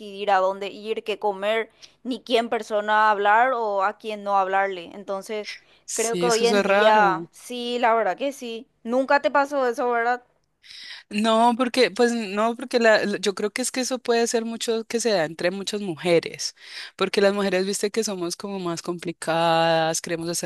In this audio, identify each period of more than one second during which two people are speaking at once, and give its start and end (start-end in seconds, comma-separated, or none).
5.9-7.3